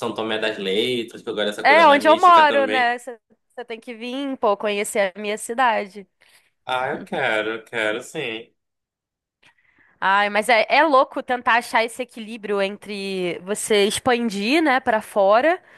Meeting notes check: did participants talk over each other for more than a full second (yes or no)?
yes